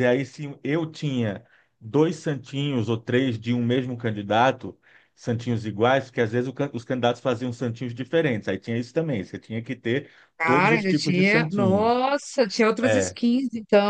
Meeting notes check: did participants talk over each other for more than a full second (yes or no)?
yes